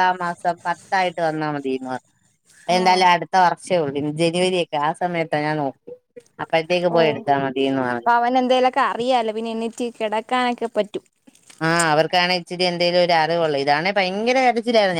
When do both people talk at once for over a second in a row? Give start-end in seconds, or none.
none